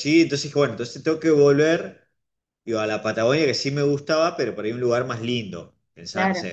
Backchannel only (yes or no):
yes